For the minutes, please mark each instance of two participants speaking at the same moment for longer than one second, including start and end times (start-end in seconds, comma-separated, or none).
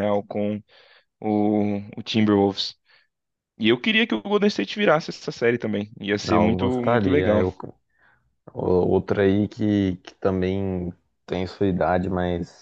6.2-7.5